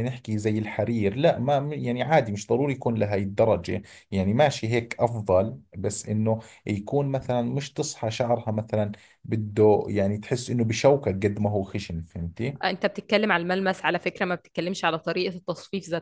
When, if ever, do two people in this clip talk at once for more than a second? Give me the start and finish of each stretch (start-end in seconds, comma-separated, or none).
none